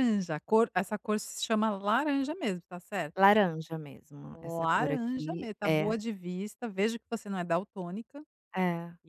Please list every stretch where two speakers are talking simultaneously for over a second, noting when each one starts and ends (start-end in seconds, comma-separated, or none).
4.3-5.9